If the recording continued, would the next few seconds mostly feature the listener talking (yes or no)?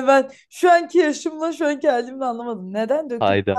yes